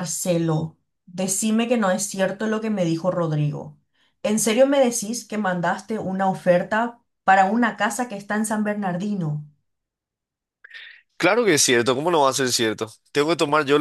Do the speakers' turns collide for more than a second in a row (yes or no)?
no